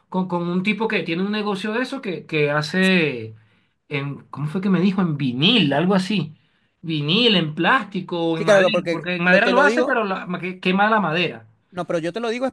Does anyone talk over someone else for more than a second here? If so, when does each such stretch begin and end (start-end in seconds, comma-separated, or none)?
8.3-10.0